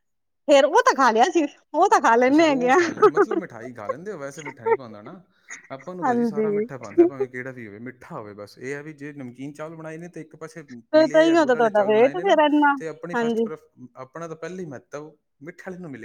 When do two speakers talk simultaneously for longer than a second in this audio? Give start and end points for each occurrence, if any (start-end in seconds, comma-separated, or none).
10.9-12.4